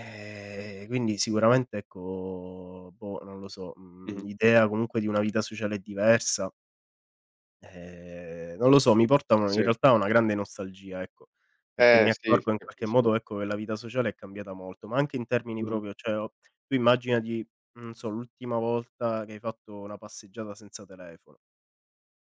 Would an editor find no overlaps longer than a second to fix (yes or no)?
no